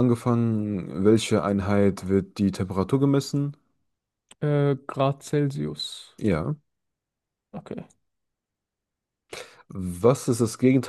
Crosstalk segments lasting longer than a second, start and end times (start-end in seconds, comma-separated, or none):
none